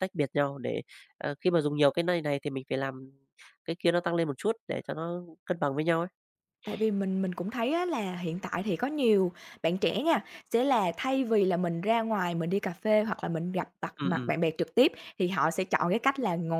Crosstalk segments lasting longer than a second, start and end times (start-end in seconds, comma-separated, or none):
none